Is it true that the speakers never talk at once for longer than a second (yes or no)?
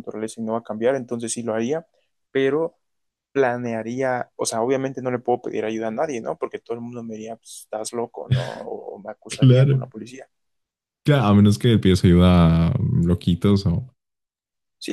yes